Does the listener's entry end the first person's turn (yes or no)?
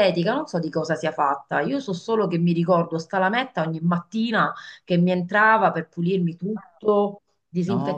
no